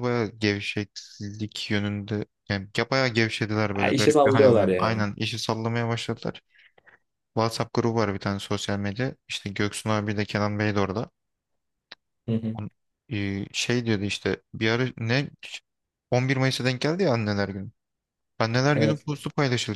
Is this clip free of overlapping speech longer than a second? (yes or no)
no